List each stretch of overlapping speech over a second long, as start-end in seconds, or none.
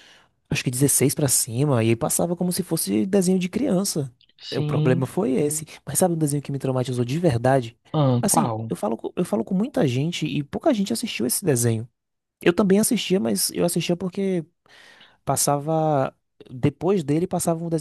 none